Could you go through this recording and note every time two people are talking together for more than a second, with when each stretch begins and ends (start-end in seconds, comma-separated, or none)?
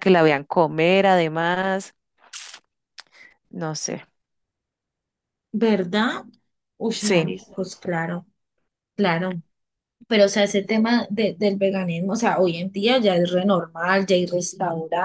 none